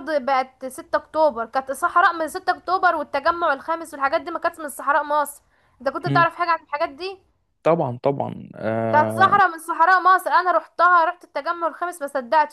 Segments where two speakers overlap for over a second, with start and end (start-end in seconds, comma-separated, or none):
none